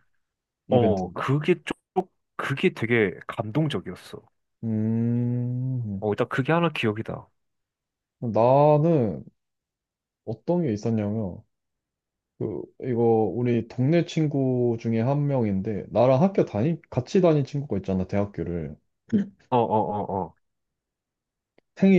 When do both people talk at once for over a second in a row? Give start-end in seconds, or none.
none